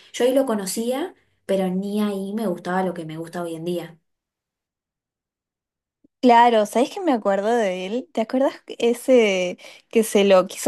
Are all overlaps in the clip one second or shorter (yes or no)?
yes